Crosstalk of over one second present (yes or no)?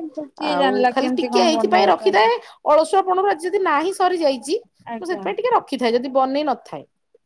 yes